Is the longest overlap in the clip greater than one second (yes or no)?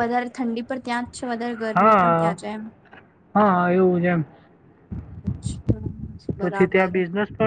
no